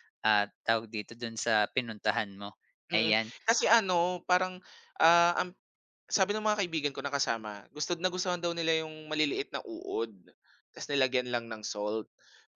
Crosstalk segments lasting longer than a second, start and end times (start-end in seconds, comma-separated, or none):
none